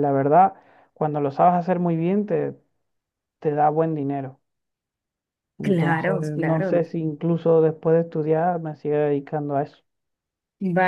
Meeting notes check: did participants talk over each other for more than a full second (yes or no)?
yes